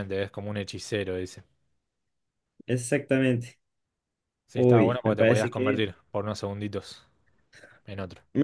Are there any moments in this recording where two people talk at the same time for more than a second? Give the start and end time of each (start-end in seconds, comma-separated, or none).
4.5-5.8